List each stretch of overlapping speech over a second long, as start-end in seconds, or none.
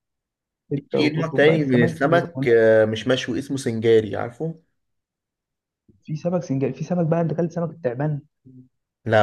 0.9-2.5